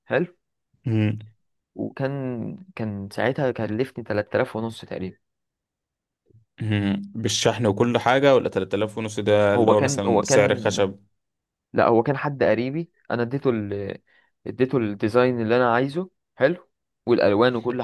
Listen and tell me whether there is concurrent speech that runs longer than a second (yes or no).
yes